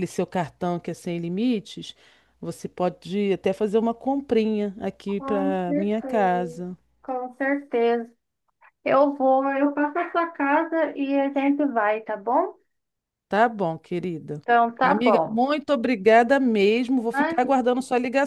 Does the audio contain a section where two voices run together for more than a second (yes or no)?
yes